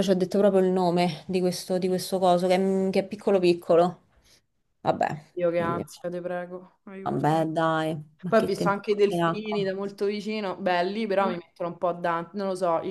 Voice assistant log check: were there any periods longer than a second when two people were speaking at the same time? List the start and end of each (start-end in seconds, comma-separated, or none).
8.3-9.7